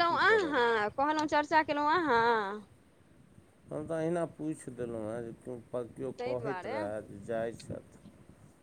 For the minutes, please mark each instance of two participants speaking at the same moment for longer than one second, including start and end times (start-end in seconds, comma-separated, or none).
none